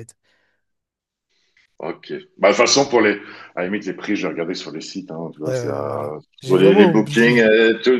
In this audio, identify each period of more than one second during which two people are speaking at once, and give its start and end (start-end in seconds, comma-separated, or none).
5.5-7.5